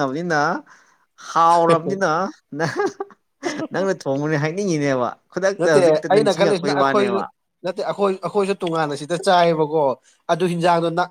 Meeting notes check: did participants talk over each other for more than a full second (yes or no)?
yes